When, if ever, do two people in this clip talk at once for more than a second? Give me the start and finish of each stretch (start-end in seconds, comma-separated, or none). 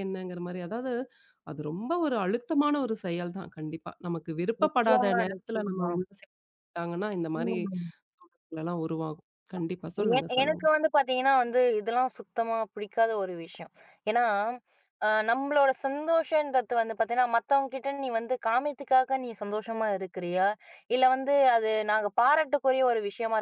4.6-5.9